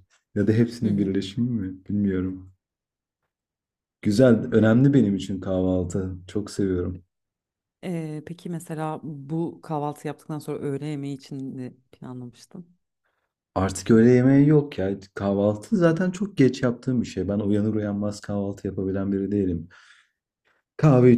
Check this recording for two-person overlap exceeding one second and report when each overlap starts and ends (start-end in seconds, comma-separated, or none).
none